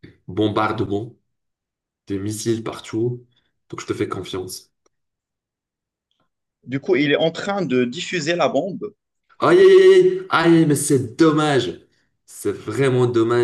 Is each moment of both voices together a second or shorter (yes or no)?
yes